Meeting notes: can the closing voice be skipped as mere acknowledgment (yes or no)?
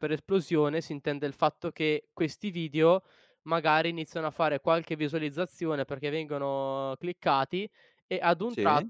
yes